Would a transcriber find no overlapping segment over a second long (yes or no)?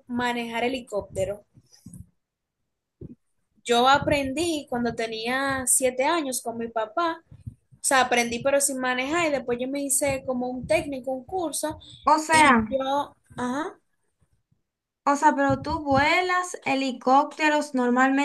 yes